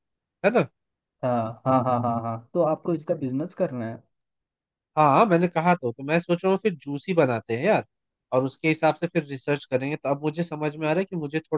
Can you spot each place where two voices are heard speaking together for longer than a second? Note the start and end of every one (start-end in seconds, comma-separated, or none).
none